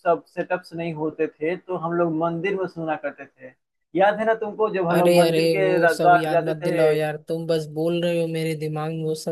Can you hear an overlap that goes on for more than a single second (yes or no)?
yes